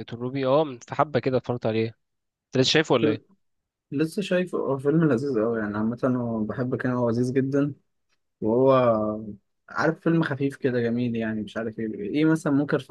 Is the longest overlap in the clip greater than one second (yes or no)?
no